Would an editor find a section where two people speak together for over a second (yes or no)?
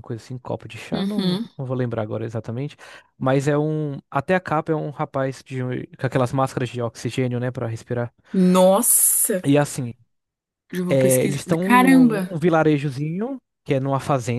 yes